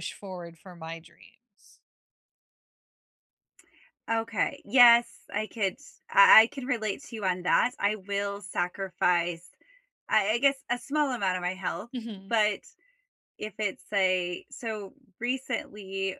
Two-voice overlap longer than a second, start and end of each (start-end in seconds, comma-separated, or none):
none